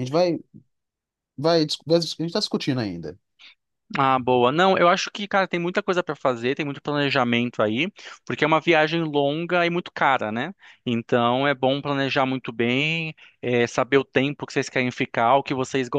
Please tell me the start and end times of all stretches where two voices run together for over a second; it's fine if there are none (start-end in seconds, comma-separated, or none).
none